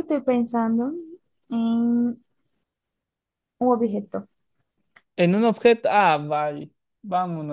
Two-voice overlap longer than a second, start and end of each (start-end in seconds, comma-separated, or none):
none